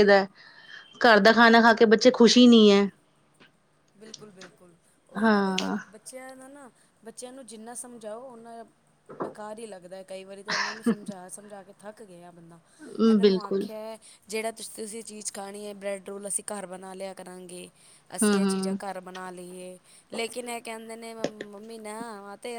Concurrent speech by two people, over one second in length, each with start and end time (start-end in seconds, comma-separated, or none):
none